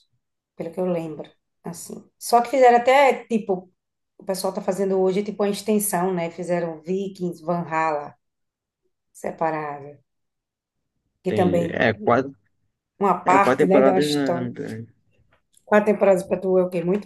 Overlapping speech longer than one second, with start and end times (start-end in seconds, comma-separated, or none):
13.2-14.5